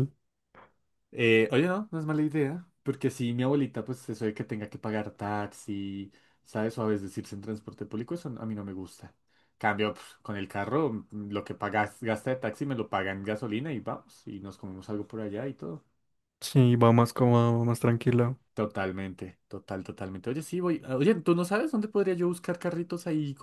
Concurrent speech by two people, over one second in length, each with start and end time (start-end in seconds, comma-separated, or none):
none